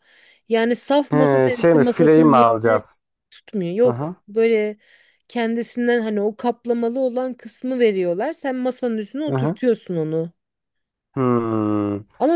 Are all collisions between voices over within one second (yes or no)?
no